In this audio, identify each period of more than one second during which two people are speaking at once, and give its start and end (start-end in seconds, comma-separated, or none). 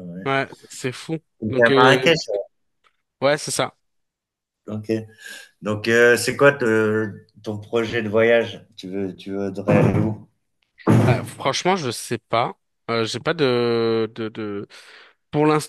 none